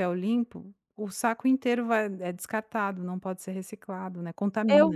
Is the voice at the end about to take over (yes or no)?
yes